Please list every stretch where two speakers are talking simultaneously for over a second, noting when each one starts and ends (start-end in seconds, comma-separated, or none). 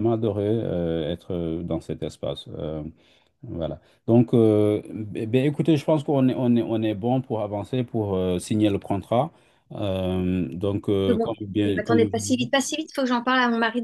11.1-12.5